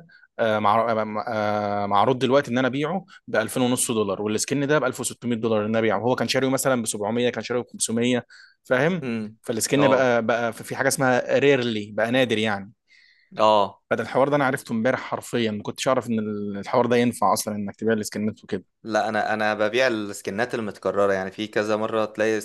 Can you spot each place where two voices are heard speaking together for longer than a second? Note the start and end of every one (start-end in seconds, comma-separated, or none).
none